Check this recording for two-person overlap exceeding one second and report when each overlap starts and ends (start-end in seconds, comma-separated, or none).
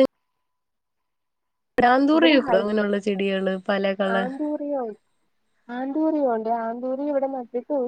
none